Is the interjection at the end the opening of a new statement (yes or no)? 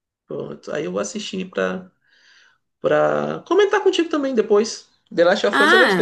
yes